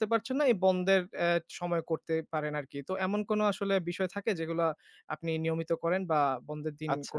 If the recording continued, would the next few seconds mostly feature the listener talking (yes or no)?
yes